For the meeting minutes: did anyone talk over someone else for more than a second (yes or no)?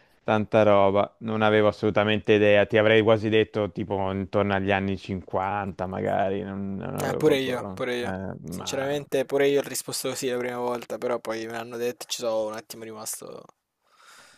yes